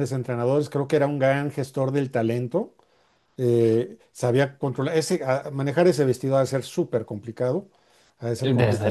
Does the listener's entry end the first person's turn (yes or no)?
yes